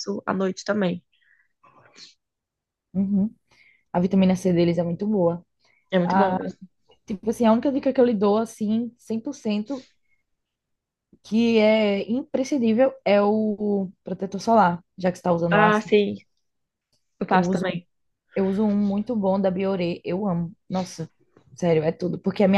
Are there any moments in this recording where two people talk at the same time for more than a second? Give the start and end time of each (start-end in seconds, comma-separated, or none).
none